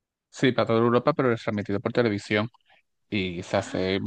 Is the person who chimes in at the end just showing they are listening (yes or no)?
yes